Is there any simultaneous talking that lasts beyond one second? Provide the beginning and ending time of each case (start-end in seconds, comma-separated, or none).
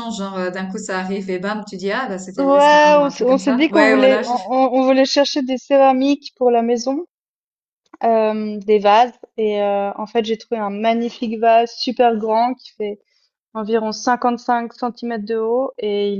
2.4-4.4